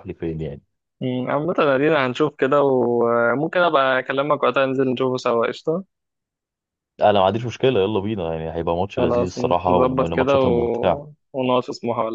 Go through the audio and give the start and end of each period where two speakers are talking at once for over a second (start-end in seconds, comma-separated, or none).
9.0-11.2